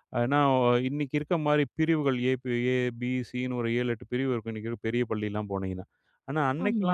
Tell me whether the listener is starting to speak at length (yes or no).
no